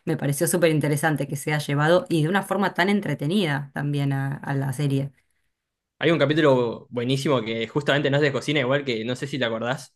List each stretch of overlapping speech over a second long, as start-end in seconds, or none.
none